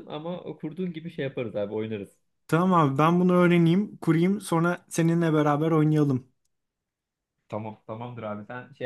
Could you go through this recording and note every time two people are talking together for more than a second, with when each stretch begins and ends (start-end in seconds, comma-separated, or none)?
none